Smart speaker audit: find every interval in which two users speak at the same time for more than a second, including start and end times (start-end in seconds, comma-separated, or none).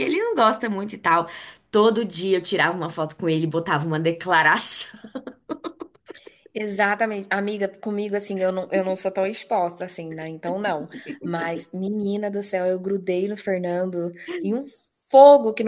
none